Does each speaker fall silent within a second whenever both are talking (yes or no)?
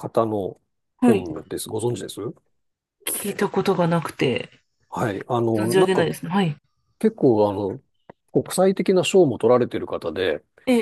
yes